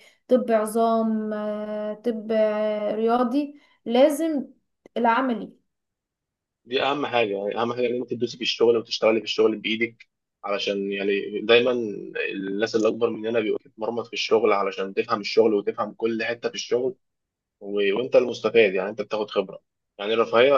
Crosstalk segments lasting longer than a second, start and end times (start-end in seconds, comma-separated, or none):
none